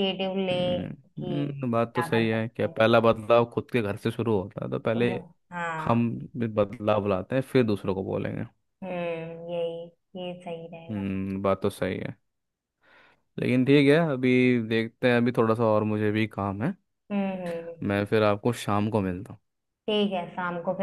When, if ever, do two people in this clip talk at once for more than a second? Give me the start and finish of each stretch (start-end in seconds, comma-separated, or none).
0.5-2.7